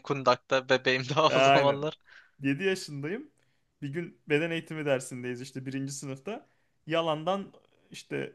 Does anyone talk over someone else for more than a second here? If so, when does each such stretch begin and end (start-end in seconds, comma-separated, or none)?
none